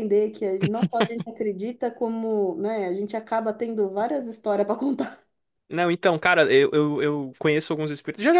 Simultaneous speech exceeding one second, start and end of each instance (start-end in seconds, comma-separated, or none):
none